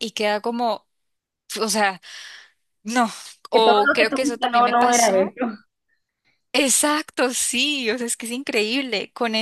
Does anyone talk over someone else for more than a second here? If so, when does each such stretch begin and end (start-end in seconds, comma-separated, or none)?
3.5-5.3